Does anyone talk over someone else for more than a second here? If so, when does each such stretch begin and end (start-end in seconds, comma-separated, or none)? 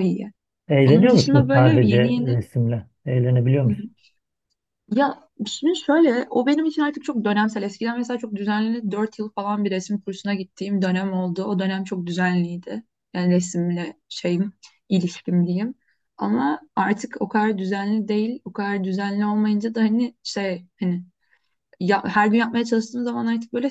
0.8-2.4